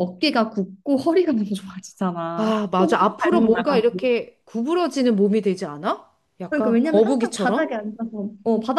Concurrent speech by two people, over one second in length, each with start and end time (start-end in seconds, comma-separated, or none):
2.4-4.0, 6.5-7.7